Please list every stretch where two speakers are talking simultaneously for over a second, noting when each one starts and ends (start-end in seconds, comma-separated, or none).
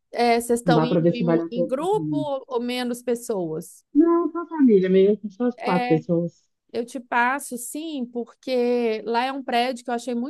0.7-2.3